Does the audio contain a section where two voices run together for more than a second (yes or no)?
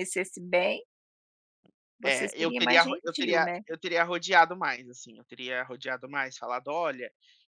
yes